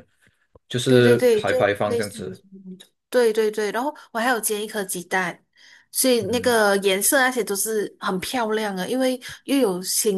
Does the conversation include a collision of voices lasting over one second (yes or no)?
yes